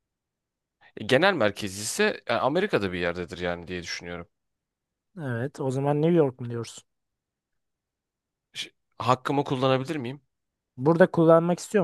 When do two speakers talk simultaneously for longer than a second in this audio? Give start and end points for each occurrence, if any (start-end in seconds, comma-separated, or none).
none